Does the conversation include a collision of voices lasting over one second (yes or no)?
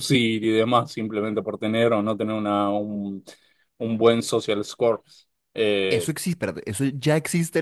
no